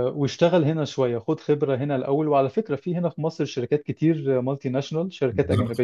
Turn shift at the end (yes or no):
no